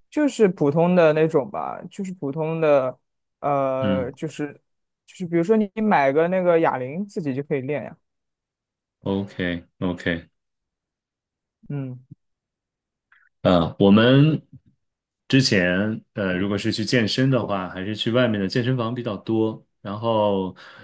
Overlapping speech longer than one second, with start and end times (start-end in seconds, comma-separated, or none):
none